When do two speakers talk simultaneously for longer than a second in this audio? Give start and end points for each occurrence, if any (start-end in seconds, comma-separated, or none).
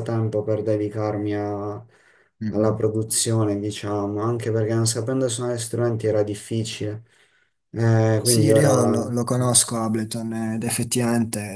8.2-9.6